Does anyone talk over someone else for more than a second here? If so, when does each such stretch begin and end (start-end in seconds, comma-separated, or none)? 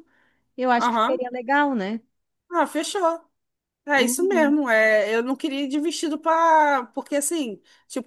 none